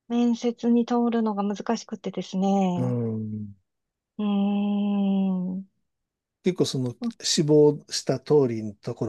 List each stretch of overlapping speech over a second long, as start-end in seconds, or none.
none